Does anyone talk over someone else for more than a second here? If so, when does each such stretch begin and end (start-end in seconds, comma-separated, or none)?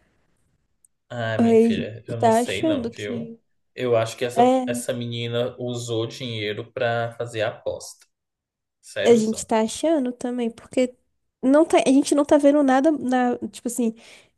1.4-3.4